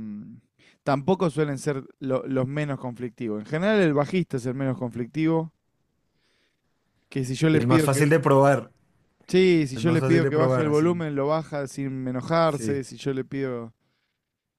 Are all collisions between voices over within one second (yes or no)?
no